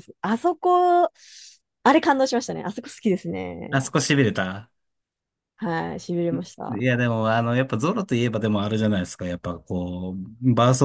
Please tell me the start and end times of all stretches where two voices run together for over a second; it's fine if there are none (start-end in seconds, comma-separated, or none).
none